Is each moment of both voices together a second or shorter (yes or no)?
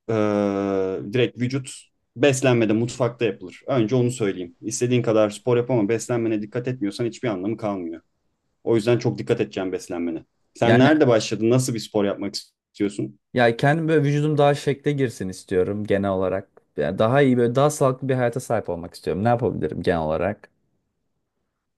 yes